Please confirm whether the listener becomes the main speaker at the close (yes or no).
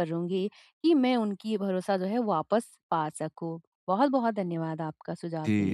yes